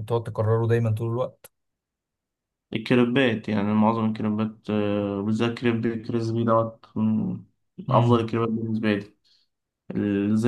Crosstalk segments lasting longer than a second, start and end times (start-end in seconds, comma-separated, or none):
none